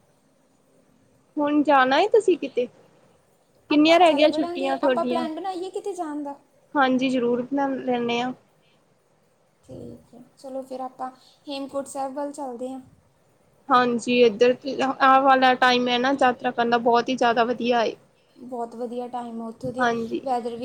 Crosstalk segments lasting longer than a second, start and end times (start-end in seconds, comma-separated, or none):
3.7-5.2